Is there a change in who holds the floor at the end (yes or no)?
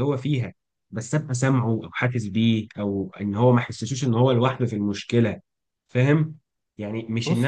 no